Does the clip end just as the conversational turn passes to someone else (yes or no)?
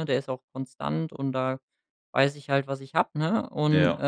no